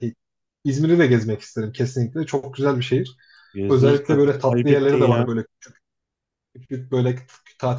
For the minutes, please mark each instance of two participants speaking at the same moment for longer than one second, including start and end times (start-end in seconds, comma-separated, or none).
3.7-5.3